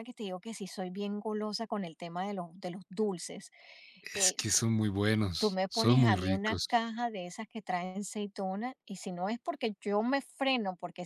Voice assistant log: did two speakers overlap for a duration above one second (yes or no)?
yes